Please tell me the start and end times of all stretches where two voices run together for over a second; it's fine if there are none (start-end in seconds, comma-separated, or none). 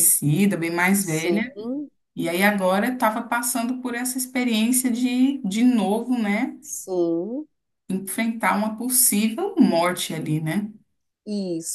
none